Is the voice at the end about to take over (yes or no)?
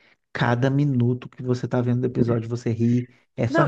yes